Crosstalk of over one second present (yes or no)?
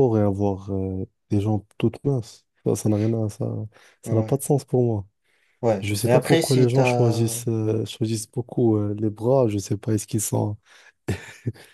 yes